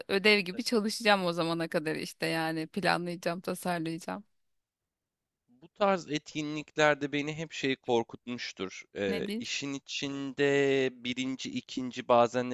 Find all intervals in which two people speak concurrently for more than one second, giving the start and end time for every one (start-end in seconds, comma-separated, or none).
none